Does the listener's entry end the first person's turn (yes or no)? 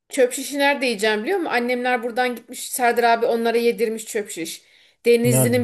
no